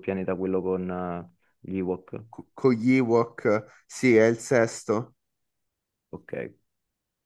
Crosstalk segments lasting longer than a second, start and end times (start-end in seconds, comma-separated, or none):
none